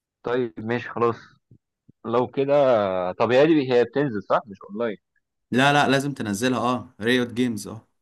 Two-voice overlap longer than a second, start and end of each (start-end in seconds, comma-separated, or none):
none